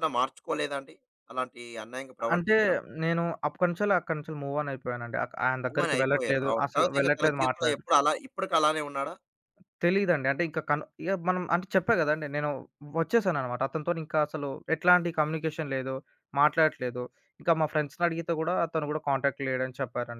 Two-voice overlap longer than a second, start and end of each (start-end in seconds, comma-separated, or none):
5.7-7.7